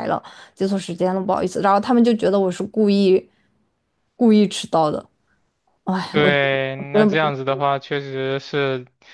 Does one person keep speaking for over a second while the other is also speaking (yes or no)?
yes